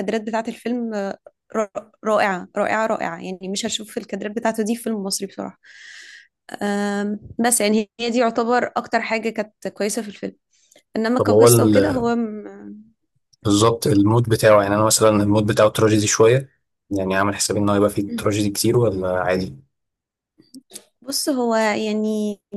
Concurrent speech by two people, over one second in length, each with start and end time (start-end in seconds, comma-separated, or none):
none